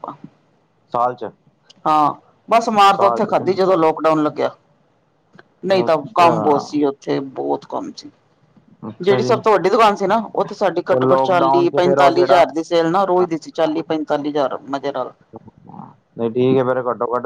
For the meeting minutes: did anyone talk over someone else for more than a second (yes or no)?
yes